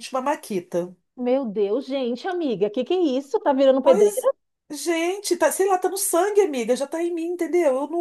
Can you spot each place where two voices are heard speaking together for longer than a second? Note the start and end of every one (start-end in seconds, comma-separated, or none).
none